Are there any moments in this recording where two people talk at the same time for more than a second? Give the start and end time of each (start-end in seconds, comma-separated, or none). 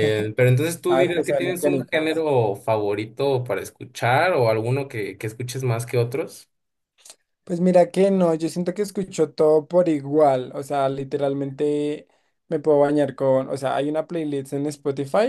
0.9-2.2